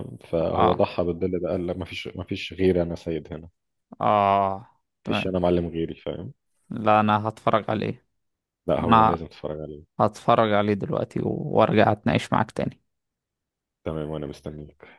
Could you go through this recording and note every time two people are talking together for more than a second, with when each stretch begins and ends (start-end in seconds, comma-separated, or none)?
none